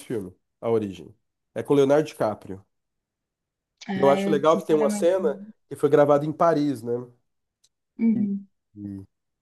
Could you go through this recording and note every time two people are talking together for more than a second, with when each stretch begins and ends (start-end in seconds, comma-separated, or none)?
3.9-5.5